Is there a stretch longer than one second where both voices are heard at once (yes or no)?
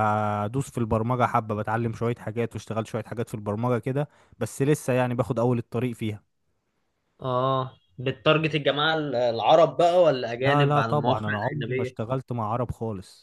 yes